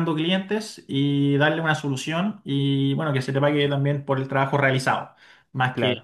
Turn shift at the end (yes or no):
yes